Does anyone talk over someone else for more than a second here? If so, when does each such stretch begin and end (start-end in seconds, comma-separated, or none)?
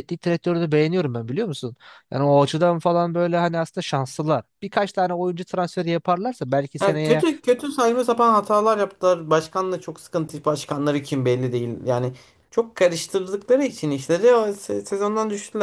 none